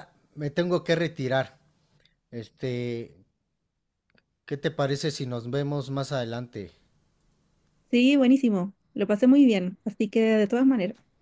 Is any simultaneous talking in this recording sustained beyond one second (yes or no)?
no